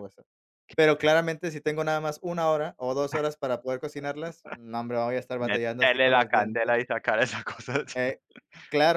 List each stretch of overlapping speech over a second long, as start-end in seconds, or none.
5.4-6.8